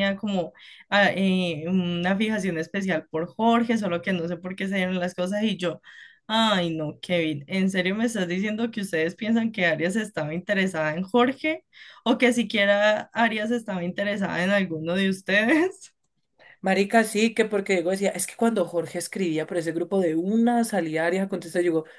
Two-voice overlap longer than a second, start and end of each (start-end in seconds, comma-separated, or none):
none